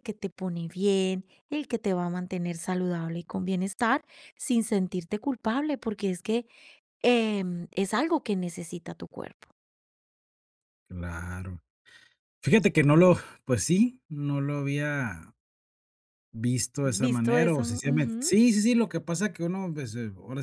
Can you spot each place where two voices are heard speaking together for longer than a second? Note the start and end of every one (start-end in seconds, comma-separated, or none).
16.8-18.3